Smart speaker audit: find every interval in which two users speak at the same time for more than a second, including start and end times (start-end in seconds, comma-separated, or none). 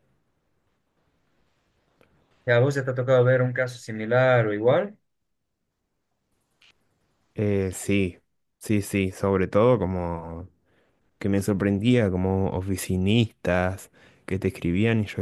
none